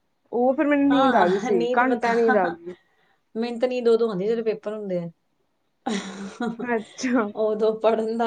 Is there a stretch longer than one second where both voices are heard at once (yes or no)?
no